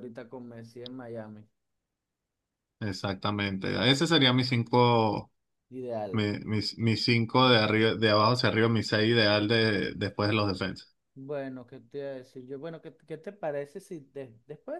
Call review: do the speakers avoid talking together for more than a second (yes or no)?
yes